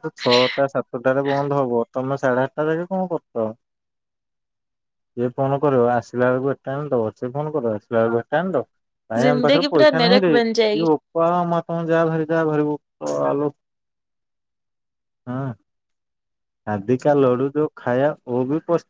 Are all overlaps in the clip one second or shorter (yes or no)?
no